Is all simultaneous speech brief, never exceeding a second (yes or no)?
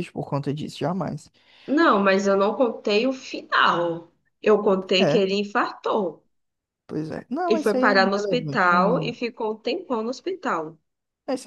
no